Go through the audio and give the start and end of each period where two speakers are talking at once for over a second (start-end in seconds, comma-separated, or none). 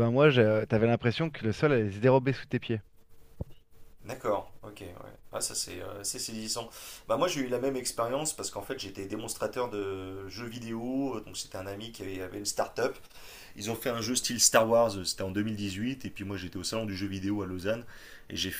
none